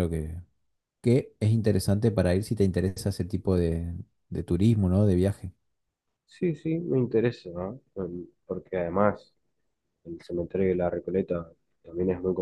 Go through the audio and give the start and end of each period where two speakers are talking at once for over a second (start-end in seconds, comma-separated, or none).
none